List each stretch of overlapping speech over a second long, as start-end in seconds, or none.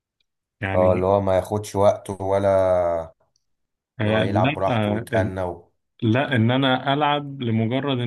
4.0-5.3